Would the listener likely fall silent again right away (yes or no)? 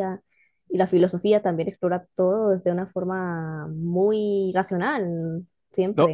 no